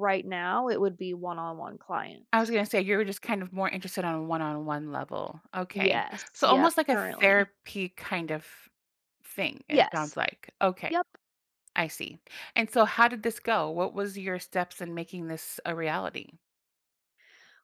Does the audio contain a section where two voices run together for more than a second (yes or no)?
yes